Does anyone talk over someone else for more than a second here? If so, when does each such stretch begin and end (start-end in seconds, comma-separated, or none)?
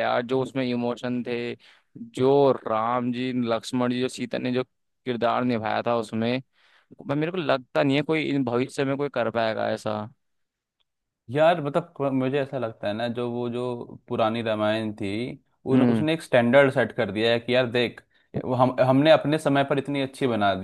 none